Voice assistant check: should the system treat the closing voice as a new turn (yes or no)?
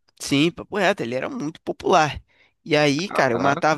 no